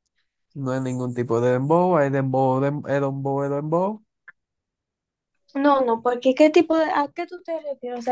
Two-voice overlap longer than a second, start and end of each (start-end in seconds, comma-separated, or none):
none